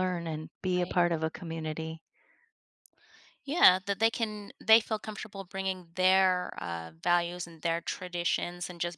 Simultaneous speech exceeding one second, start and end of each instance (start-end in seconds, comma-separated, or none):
none